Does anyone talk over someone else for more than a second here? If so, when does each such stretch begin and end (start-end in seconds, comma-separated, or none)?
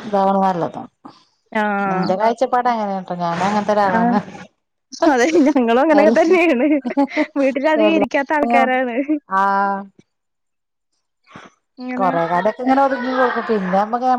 none